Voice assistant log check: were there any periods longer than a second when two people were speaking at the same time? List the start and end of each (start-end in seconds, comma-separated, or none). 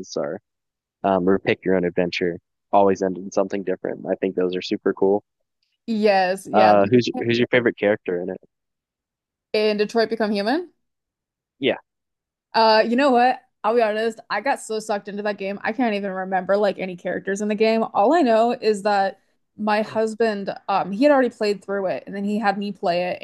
none